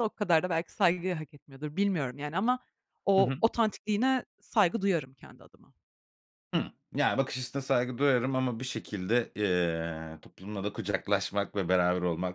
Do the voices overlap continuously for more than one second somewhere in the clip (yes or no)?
no